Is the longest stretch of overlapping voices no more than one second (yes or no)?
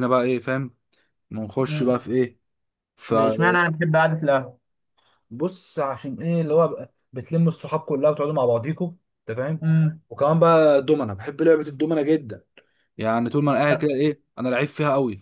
yes